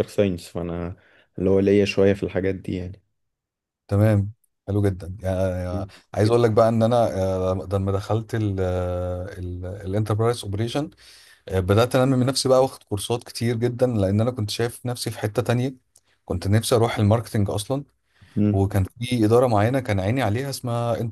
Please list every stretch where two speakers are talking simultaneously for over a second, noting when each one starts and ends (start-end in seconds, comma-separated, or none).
none